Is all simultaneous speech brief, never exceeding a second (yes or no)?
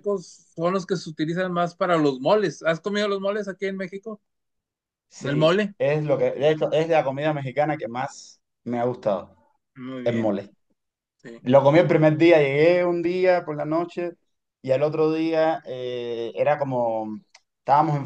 yes